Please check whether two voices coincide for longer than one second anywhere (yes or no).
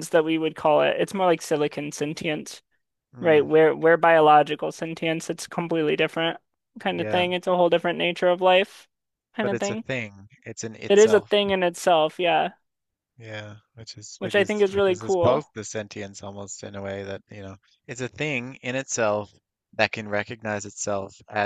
yes